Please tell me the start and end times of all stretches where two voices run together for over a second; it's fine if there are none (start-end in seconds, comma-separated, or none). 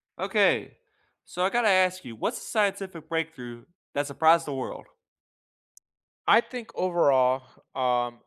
none